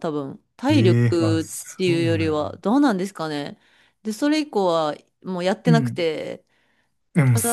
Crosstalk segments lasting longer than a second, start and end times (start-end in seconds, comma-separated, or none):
0.7-2.6